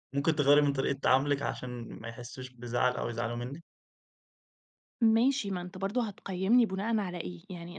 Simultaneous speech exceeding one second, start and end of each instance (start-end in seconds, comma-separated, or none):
none